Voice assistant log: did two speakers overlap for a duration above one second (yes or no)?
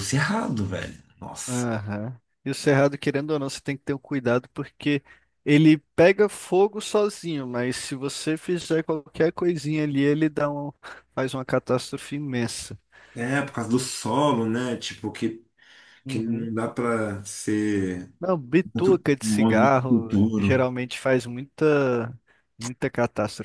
yes